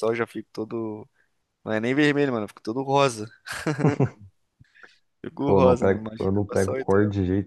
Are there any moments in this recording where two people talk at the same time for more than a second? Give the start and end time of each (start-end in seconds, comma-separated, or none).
5.5-7.0